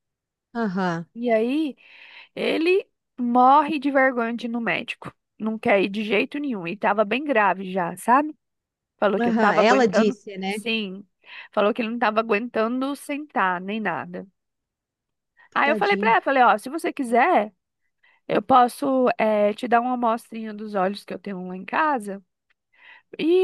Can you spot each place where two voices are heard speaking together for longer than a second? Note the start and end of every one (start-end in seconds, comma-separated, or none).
9.2-10.6